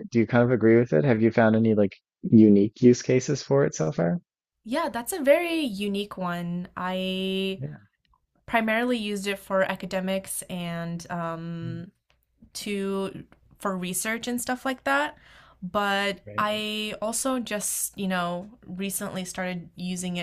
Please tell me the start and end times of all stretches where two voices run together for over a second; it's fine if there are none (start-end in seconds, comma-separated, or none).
none